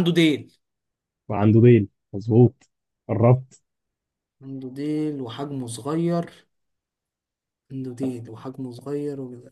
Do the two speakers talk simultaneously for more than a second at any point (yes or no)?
no